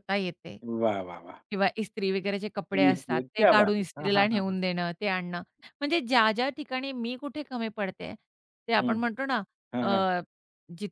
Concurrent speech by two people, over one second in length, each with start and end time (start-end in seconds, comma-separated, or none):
2.7-4.6